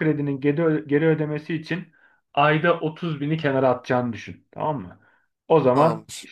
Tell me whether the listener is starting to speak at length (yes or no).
no